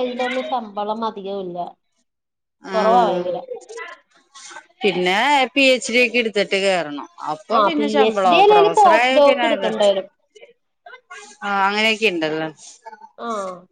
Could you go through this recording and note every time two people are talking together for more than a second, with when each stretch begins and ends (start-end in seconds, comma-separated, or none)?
7.6-9.5